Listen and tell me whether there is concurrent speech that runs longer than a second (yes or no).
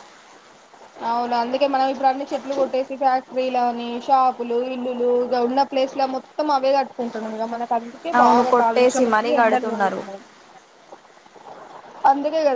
yes